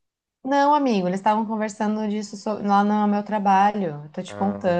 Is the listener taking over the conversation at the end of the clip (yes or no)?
yes